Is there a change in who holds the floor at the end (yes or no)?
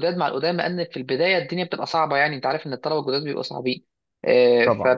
no